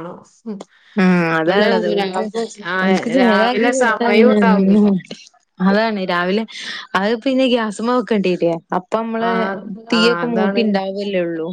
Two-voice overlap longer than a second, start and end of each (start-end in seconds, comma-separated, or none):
2.8-4.8